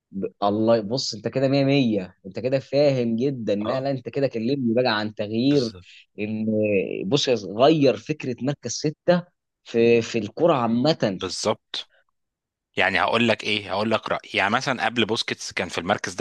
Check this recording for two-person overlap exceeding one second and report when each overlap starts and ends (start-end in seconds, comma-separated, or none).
none